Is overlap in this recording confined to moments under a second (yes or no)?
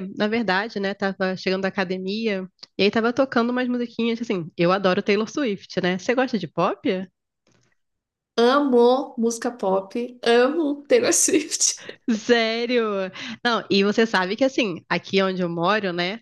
yes